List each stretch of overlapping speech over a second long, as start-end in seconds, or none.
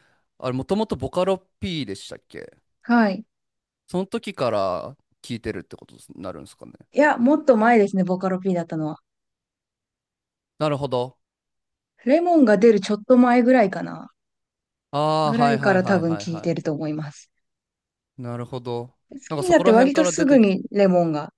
15.2-16.7, 19.1-20.5